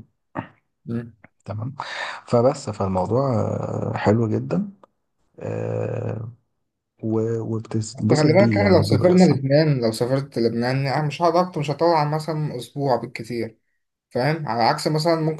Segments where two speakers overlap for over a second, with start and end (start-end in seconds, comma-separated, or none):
8.1-9.4